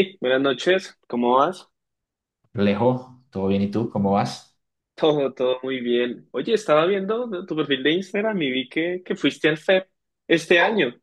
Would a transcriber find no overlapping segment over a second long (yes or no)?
yes